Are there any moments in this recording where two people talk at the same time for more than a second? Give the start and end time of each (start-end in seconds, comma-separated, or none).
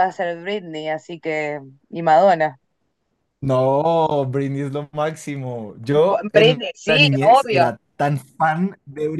6.1-7.7